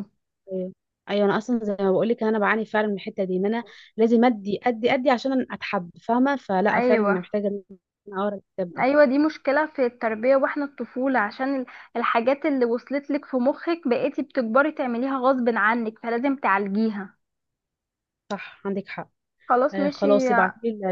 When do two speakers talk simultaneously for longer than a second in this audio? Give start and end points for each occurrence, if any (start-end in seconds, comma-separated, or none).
none